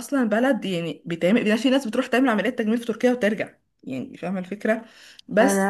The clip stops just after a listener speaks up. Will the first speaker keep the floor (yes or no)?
yes